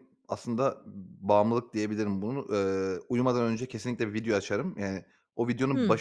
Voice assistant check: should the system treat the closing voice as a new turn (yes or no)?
no